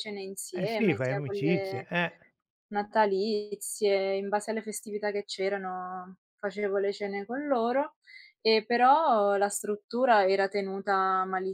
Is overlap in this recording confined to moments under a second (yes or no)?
no